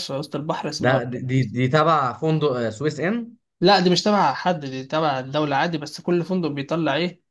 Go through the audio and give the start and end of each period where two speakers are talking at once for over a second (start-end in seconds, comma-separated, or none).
none